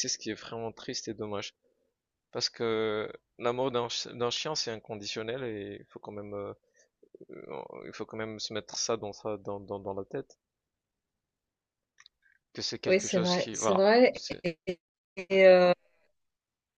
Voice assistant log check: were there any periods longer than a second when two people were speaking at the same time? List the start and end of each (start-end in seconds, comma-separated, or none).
12.9-14.4